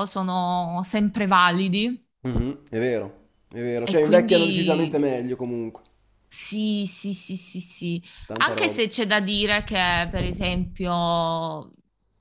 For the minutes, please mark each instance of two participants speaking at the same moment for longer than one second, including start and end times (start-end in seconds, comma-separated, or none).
3.9-5.1